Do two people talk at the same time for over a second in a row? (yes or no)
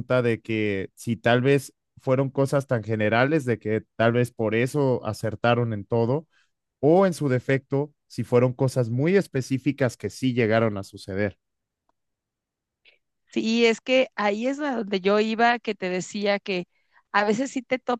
no